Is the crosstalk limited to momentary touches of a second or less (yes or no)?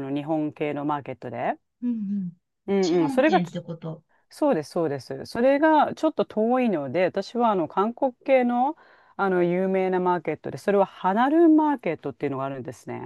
yes